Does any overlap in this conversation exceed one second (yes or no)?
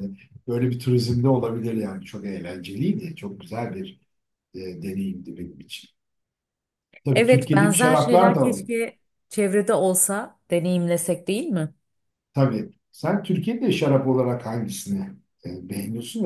yes